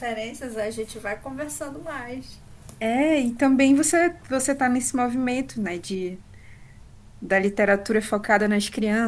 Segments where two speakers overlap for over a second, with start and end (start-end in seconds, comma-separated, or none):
none